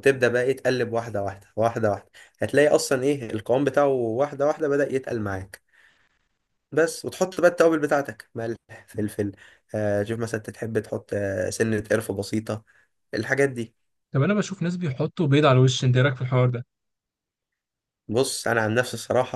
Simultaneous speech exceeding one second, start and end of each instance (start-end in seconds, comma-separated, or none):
none